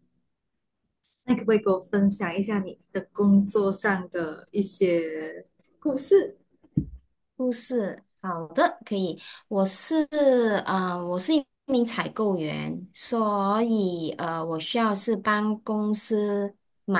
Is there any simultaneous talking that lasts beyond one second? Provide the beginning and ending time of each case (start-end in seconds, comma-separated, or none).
none